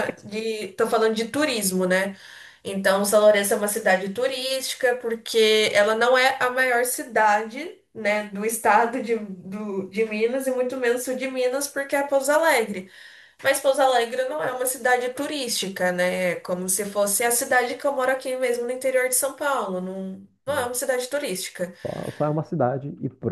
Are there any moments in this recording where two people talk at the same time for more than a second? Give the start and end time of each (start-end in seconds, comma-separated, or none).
none